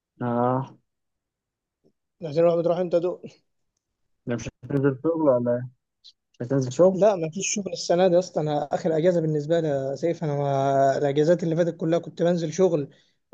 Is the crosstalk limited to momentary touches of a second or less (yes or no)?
yes